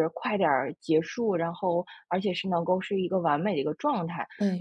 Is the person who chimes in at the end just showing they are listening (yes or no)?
yes